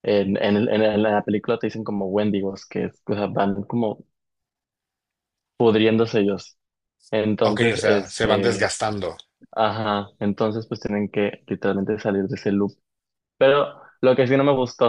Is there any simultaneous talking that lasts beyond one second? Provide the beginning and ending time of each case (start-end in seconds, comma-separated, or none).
7.4-8.7